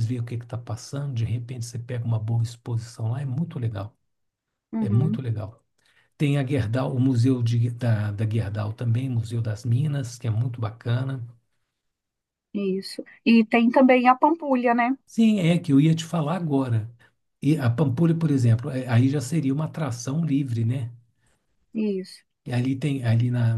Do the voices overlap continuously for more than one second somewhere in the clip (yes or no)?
no